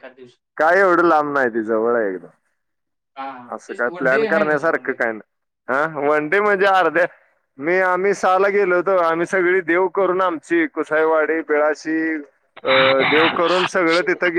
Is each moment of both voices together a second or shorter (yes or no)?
no